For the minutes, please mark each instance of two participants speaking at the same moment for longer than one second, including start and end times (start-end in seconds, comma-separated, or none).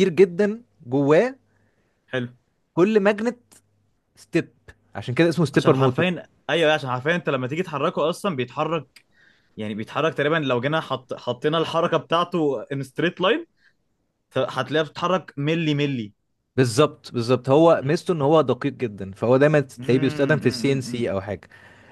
19.8-21.1